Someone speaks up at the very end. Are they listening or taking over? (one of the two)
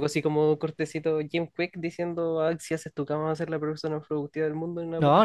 taking over